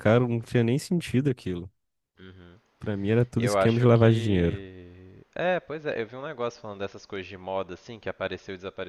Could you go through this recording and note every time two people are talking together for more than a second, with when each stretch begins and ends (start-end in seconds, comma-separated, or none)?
3.4-4.6